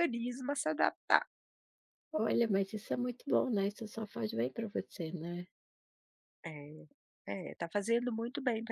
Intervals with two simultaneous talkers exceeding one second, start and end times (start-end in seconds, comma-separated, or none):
none